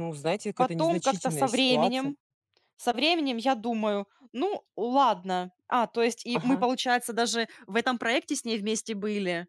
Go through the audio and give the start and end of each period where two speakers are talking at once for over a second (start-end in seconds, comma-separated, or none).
0.6-2.1